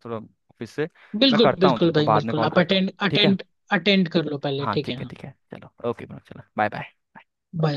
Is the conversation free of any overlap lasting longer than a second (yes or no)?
no